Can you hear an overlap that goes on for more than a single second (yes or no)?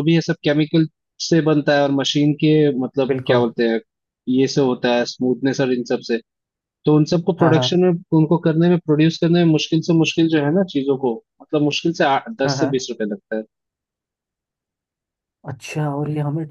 no